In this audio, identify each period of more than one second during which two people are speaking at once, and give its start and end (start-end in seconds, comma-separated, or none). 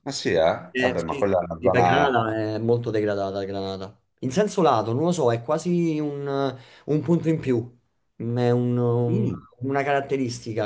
0.7-2.2